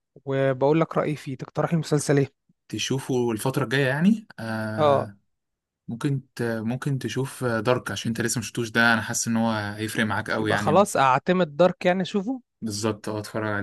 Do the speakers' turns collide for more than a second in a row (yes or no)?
no